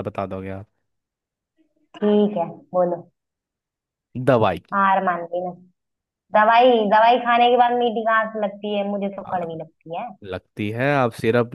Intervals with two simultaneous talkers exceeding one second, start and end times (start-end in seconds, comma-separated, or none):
none